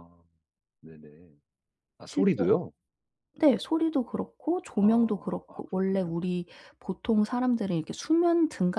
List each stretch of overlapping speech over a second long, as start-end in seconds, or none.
4.8-6.1